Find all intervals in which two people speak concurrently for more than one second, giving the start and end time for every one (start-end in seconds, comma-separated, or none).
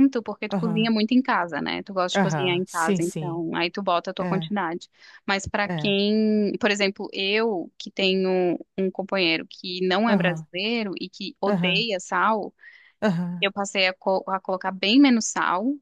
2.1-3.4